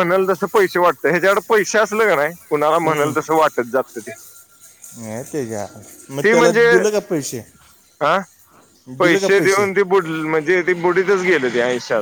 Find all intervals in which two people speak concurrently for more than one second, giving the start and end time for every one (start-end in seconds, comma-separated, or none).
none